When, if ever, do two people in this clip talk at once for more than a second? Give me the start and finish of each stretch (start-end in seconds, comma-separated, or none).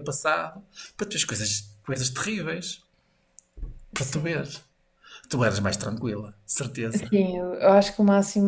none